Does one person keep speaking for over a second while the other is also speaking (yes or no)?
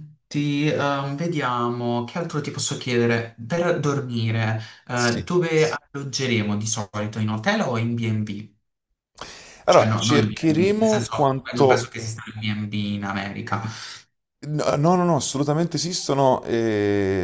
yes